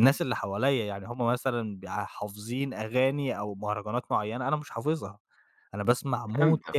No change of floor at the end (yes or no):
yes